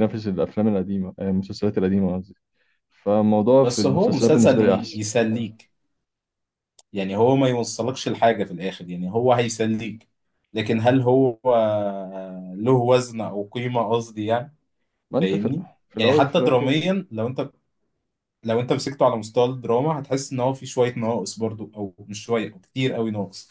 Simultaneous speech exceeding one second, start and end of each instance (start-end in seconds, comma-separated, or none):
3.6-5.0, 15.2-16.8